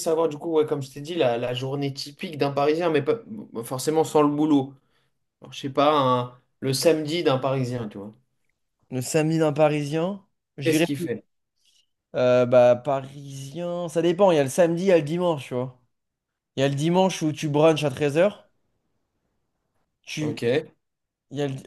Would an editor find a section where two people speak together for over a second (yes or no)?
no